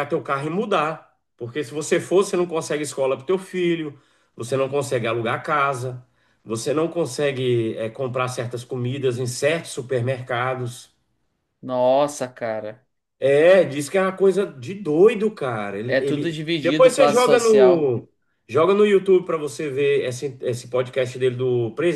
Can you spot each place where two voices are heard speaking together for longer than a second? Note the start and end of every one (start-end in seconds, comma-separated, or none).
15.9-17.9